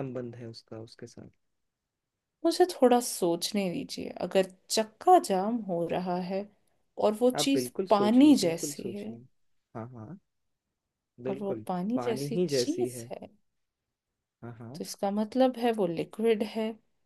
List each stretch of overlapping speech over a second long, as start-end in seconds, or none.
7.4-9.1, 11.3-13.1